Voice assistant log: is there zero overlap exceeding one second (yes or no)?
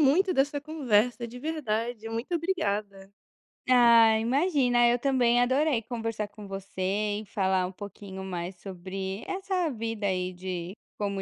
yes